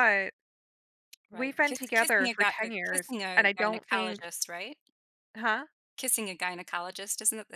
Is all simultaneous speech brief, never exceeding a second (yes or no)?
no